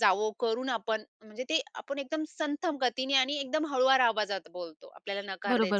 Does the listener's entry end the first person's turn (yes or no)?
yes